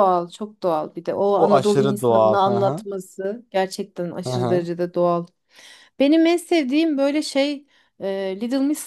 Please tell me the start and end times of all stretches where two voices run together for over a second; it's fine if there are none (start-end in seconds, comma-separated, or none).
1.4-2.8